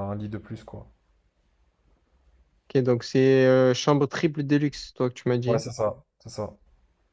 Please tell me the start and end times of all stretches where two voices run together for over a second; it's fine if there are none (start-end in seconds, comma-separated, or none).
none